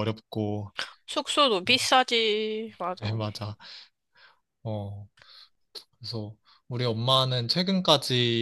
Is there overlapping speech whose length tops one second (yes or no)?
no